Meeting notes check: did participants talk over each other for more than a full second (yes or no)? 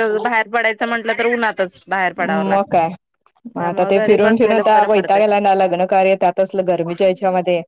yes